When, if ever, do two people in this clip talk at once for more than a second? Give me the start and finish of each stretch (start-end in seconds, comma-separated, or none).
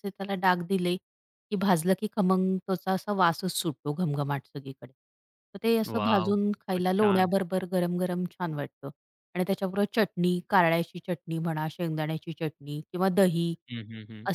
5.9-7.3